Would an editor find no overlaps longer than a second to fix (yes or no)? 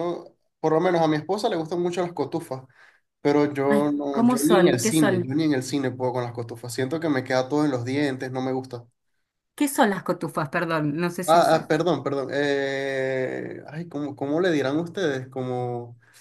no